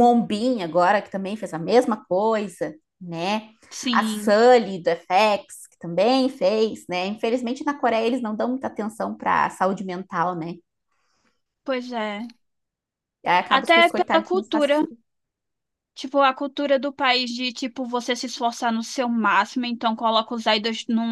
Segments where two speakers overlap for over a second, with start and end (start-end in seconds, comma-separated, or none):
13.5-14.7